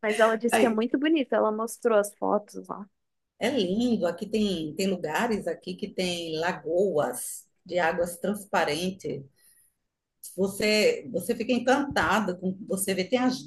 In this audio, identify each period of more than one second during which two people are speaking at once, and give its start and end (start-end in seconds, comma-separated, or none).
none